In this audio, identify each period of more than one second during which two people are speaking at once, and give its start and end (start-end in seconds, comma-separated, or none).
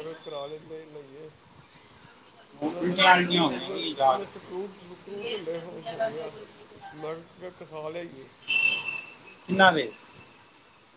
2.6-4.9